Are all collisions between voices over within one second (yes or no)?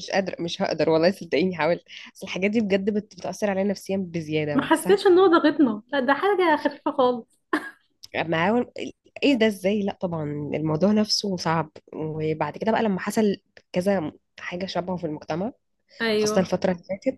yes